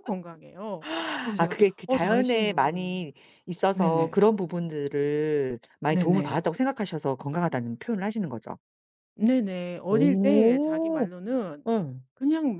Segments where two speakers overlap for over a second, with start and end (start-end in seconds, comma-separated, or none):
1.4-3.1, 9.9-11.1